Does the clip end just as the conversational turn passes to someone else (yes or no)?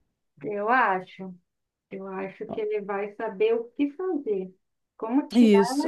yes